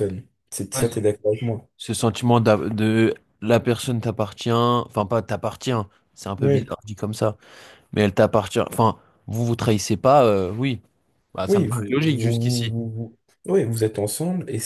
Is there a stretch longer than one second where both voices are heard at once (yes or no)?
yes